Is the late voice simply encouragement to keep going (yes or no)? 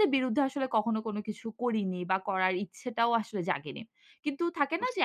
yes